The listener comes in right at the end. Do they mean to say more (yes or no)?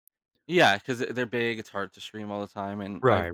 no